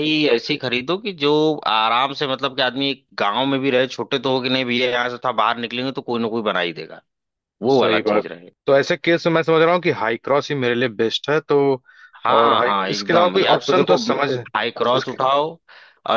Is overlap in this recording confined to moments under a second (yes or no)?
no